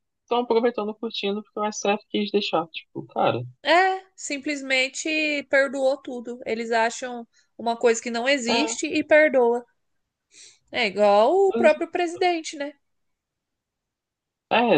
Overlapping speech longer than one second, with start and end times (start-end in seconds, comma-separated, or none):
none